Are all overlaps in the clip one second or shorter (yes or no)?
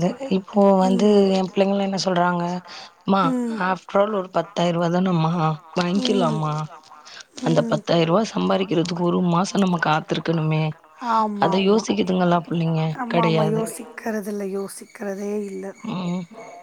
yes